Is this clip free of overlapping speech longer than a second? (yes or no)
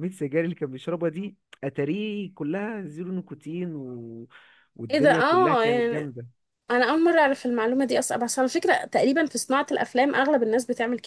no